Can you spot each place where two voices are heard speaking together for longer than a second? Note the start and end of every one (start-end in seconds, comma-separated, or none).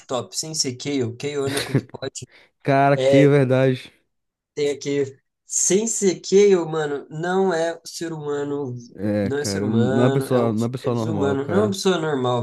9.2-11.8